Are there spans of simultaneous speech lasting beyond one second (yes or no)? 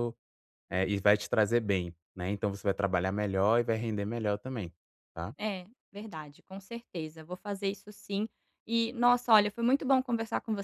no